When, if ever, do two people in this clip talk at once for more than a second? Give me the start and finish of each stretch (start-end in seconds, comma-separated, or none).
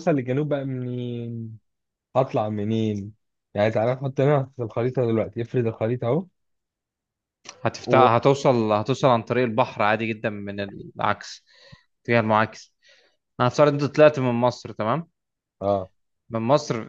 none